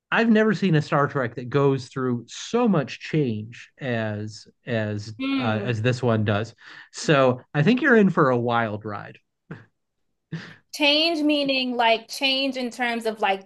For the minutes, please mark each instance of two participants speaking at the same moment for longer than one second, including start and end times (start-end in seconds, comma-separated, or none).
none